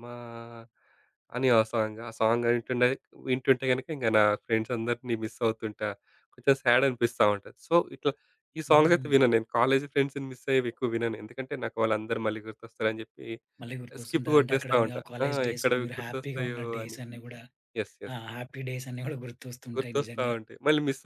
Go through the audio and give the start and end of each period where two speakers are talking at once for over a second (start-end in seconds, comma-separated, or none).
14.0-17.0